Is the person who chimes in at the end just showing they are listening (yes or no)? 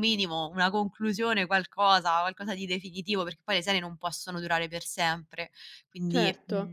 no